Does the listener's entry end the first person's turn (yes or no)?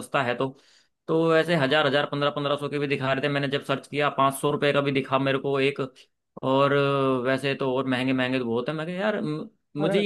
no